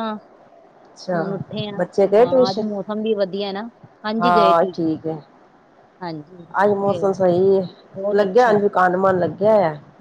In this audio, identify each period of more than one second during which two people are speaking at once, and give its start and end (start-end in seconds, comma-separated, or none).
none